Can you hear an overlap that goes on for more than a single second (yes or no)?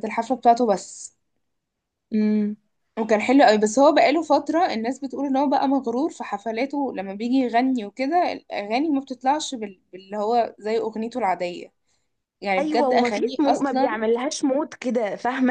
yes